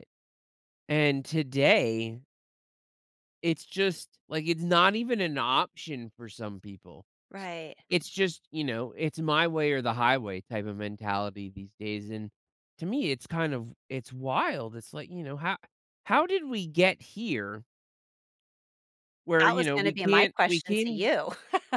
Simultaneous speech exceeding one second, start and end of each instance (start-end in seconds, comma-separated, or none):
19.4-21.1